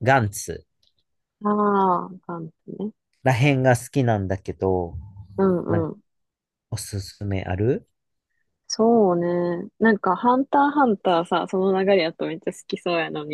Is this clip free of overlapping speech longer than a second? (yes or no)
yes